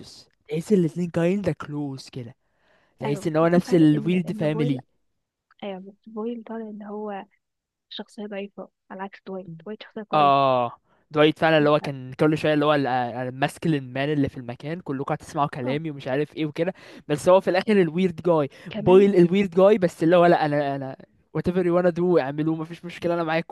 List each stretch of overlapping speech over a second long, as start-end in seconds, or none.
3.0-4.8